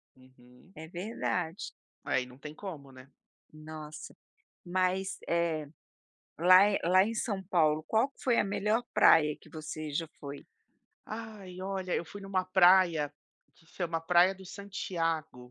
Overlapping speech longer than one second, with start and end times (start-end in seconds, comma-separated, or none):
none